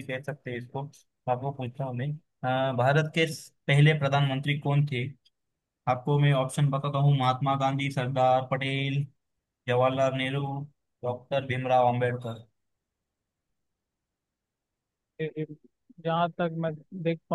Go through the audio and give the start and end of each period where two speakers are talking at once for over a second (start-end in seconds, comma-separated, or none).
none